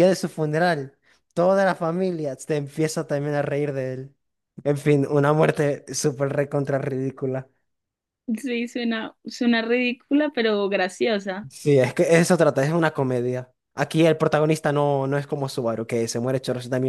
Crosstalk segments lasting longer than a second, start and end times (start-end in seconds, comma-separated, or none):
none